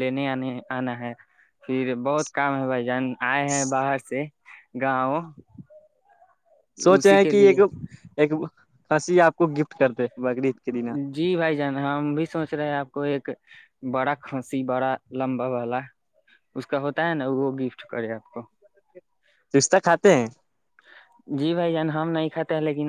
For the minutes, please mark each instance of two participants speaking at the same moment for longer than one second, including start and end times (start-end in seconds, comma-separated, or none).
none